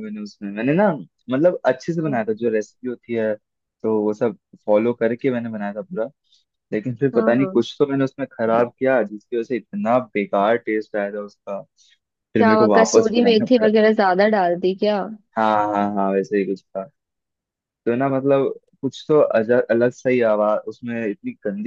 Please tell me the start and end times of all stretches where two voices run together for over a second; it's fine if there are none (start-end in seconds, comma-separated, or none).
12.4-13.7